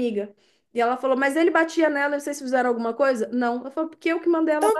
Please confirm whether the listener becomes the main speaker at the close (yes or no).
no